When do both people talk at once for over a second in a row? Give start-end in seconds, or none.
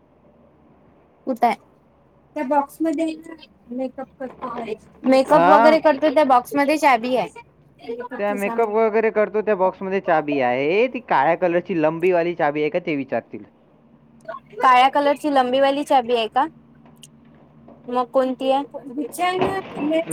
none